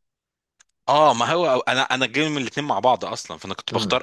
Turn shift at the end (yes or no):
no